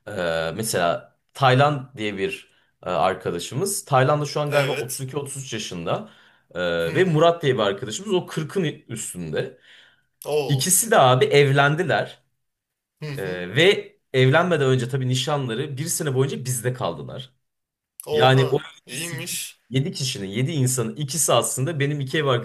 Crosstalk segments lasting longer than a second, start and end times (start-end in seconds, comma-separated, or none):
18.1-19.6